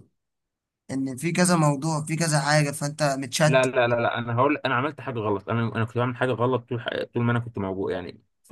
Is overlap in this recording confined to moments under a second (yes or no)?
yes